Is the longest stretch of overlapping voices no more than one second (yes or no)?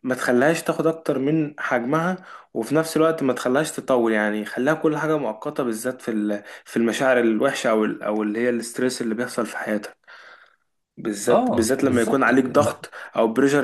no